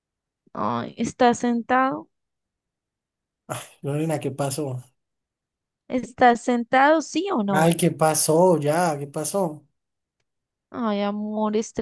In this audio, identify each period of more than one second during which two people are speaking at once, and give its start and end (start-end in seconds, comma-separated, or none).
none